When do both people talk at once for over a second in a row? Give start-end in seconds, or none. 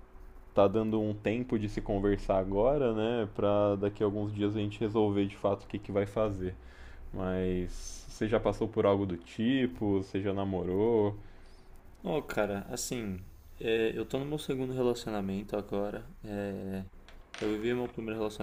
none